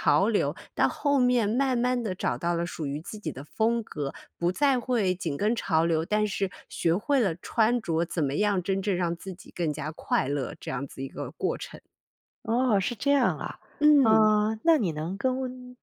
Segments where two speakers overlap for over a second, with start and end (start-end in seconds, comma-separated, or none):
none